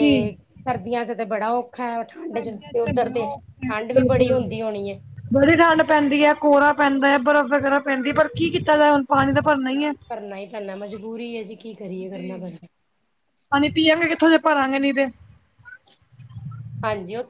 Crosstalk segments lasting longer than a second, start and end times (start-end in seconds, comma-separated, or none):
2.3-4.5